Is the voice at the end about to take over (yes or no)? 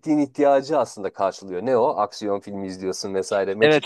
yes